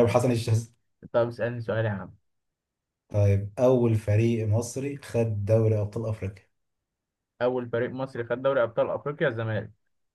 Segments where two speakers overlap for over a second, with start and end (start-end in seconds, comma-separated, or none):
none